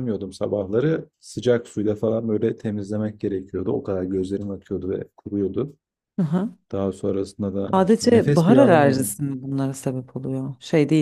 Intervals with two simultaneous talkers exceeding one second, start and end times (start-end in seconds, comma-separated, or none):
7.7-9.2